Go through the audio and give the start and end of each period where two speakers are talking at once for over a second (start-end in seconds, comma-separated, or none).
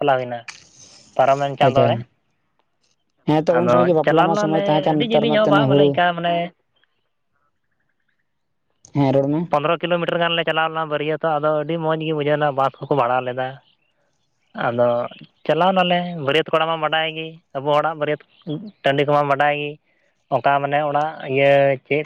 3.5-5.7